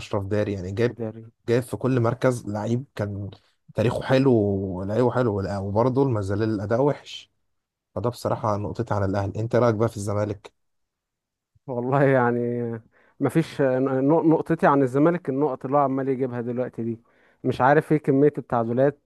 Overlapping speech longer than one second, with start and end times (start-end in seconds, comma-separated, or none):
none